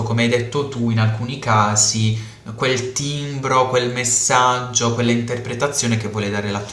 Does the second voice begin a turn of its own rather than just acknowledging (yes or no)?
yes